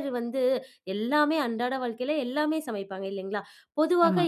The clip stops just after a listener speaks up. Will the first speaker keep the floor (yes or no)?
yes